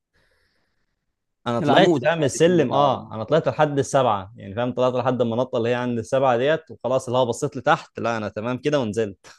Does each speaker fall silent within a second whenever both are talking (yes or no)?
no